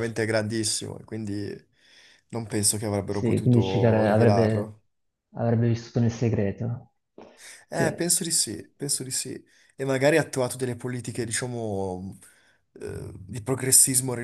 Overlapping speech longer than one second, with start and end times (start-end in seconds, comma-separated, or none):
3.1-4.7